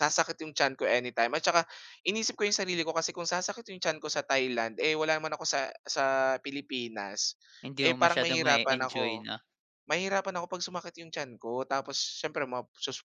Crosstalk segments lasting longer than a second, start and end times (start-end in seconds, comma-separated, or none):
7.8-9.3